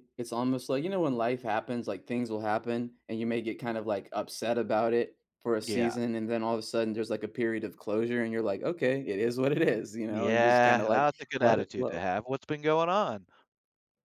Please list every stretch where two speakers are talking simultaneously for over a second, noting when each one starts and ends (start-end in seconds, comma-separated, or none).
10.1-12.0